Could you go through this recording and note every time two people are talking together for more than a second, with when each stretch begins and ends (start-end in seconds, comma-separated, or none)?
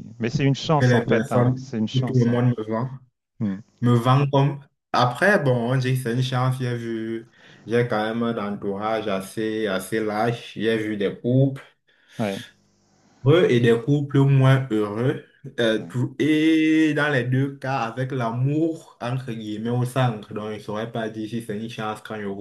0.8-2.4